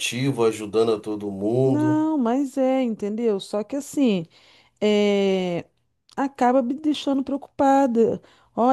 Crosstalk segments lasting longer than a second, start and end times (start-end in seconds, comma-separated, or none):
none